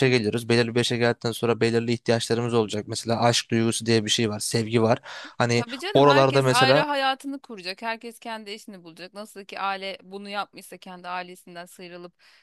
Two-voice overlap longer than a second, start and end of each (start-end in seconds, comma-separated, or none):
5.5-6.8